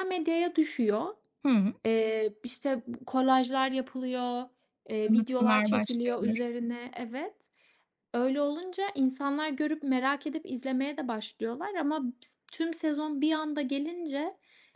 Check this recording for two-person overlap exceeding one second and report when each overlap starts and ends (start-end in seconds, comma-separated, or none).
5.0-6.5